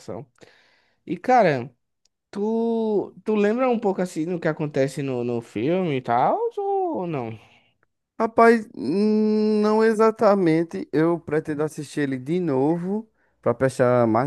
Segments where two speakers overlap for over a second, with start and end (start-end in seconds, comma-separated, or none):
none